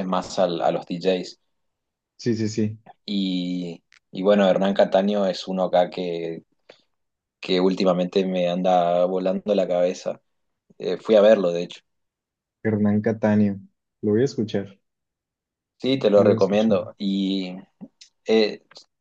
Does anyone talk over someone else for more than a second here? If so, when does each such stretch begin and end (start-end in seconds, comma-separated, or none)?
none